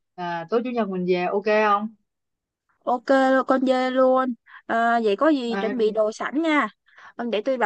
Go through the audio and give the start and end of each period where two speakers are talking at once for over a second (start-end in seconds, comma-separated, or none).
none